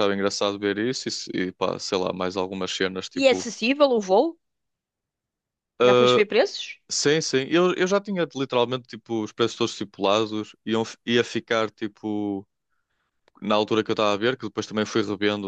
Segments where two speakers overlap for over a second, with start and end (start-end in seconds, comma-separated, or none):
none